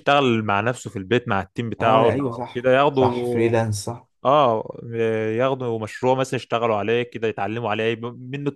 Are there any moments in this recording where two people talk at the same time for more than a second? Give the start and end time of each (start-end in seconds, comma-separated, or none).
1.8-3.1